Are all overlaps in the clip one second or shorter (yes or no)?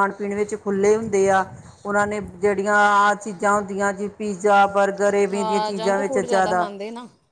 yes